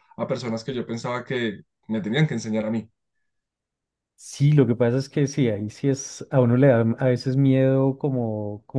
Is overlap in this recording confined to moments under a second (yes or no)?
yes